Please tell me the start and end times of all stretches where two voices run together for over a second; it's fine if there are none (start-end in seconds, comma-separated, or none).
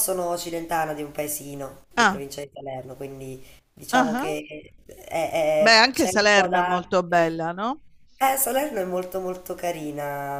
5.6-7.4